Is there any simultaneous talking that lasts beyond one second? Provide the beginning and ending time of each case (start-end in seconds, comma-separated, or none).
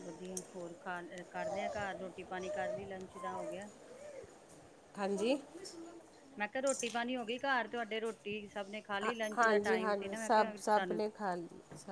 9.0-11.0